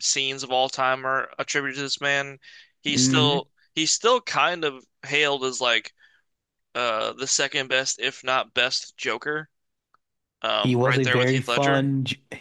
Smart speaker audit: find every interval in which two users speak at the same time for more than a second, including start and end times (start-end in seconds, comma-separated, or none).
10.6-11.9